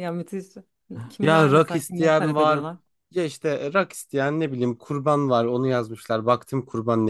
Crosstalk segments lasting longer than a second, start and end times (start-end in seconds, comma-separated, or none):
1.2-2.6